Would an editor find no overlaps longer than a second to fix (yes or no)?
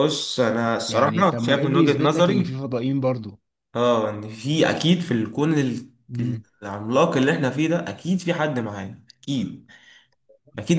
no